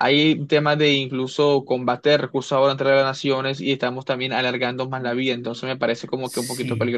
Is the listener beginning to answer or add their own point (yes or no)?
yes